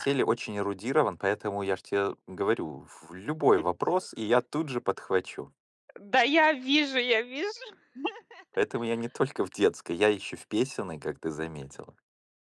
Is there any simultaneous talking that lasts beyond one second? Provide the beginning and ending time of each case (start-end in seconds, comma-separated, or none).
none